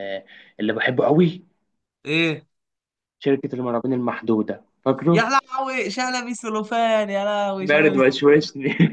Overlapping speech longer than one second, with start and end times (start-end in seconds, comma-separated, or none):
none